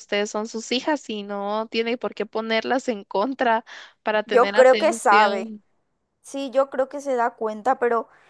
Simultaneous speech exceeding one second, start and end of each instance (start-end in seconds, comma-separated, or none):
4.2-5.5